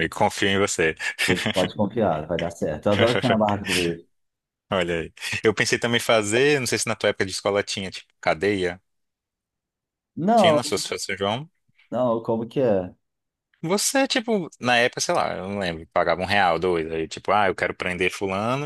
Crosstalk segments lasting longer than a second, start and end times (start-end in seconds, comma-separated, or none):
none